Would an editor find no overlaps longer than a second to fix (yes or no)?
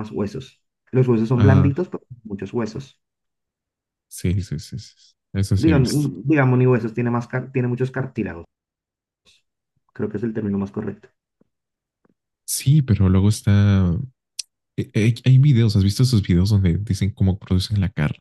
yes